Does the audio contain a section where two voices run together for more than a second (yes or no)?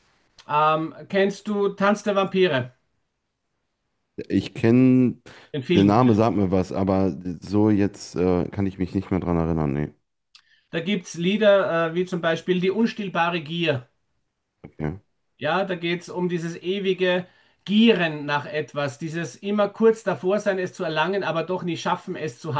no